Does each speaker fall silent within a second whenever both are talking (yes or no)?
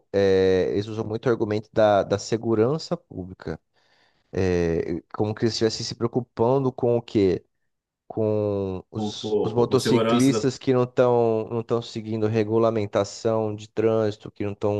no